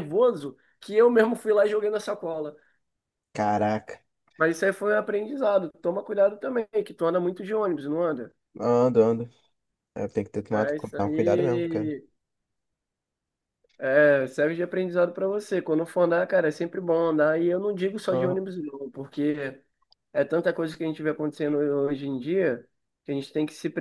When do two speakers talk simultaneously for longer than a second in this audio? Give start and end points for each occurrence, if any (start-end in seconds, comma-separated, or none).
10.5-11.9